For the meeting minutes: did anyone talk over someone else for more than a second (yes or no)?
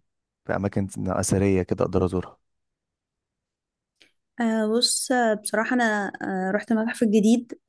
no